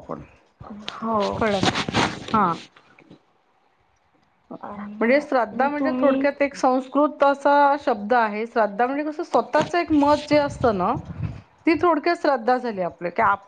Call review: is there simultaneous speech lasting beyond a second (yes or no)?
yes